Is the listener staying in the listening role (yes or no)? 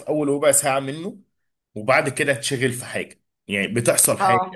yes